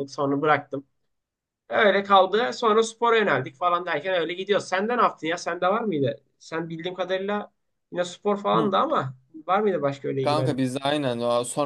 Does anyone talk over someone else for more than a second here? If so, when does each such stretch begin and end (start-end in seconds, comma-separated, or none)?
none